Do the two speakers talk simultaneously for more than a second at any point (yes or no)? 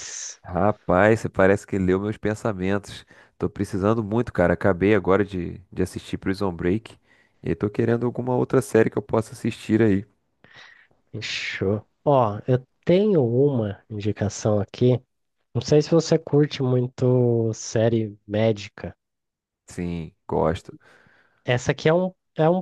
no